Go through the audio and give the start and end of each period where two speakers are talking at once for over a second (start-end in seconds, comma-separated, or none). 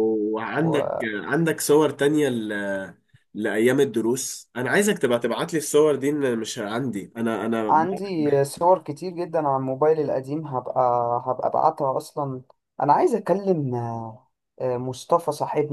none